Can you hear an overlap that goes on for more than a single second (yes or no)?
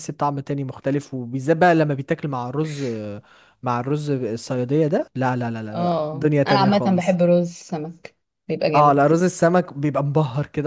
yes